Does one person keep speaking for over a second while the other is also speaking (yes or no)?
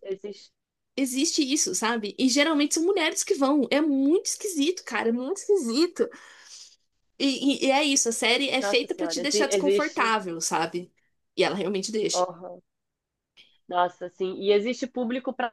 yes